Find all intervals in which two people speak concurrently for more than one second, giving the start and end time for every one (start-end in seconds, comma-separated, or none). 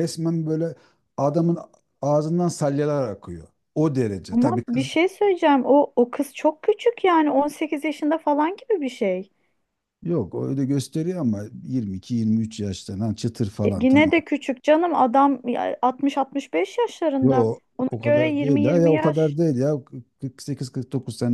17.2-19.4